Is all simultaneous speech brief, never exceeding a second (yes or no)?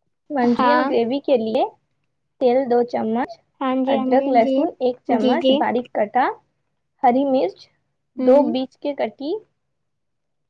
no